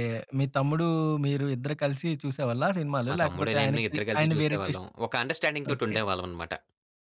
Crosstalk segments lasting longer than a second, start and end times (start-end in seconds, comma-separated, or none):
3.1-4.9